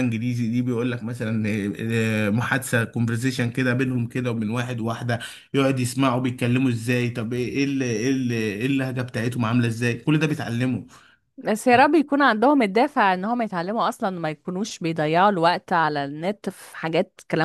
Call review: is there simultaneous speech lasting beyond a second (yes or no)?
no